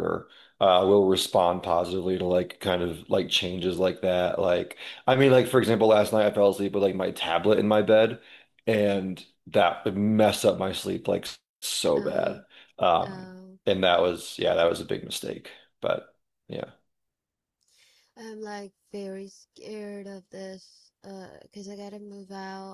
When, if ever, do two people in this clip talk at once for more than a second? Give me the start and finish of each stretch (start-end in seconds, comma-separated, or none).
none